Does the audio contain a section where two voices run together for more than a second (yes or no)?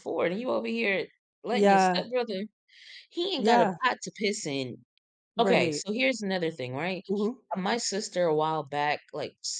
no